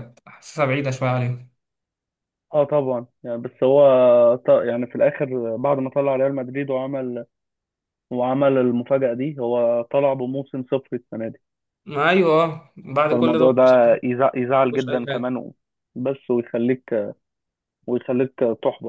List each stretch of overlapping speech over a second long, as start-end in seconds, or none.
none